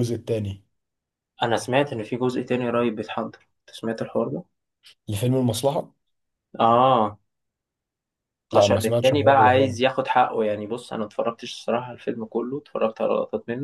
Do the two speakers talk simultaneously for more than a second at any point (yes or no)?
yes